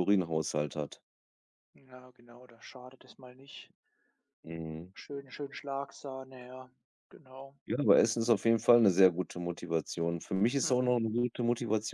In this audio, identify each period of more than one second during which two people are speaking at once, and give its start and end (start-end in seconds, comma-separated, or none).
none